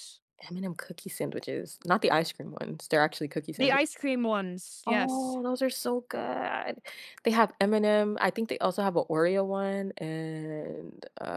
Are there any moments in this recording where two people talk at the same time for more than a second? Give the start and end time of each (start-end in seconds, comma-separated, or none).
none